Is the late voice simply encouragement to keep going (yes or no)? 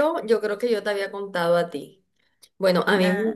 yes